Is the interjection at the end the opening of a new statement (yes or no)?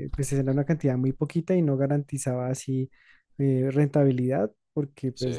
no